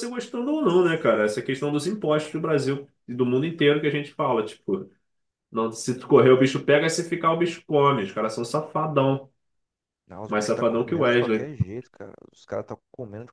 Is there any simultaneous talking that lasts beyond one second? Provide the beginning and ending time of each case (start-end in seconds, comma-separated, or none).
10.3-11.5